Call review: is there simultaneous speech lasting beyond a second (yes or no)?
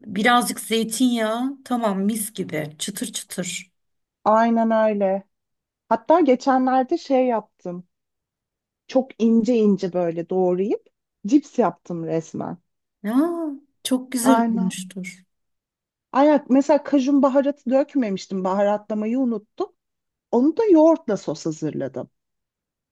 no